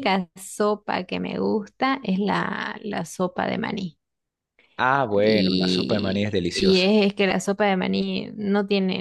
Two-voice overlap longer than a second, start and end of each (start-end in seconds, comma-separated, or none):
5.1-6.9